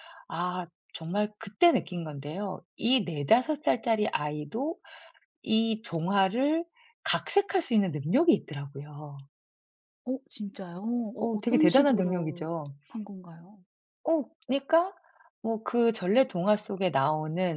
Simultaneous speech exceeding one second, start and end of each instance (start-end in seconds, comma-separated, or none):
11.2-12.5